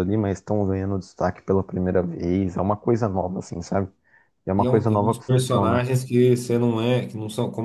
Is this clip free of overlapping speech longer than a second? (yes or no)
no